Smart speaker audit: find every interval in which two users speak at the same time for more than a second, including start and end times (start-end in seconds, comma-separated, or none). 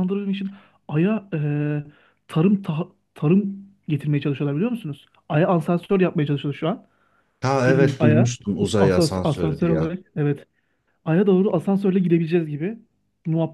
7.7-9.9